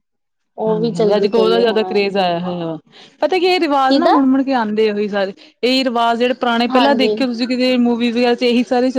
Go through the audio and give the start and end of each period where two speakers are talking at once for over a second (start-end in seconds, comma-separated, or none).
0.7-2.0